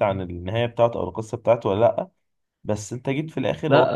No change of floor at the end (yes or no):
yes